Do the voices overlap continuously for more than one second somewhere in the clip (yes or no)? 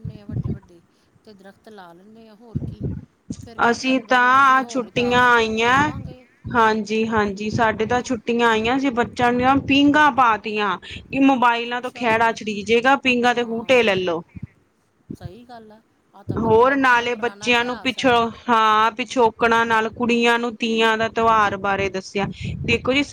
yes